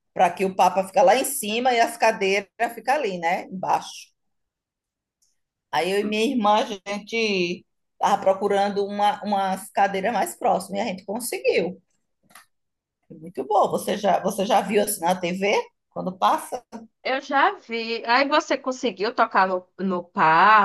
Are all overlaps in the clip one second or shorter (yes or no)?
yes